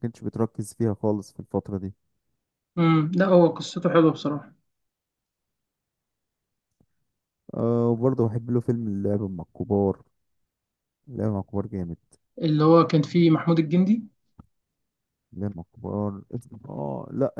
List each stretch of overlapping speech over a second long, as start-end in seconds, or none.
none